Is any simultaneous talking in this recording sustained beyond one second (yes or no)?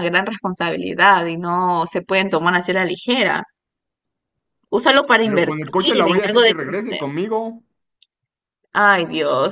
yes